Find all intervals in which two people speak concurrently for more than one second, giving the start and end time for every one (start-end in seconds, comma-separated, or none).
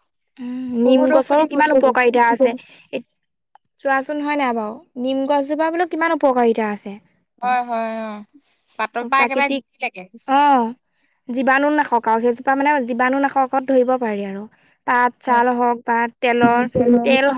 0.8-2.5